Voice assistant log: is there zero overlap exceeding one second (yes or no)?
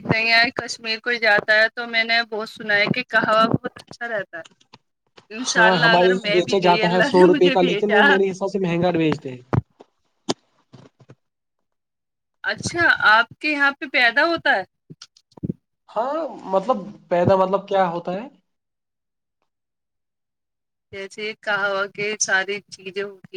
no